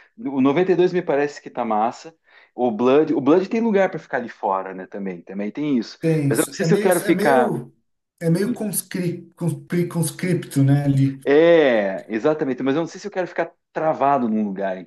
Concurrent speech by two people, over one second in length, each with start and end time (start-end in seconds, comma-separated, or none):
6.0-7.5